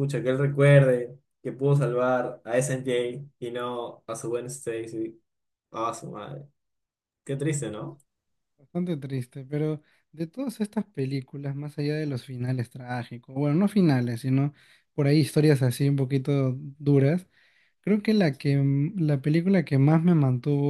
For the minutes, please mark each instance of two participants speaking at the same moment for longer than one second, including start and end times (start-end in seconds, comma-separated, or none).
none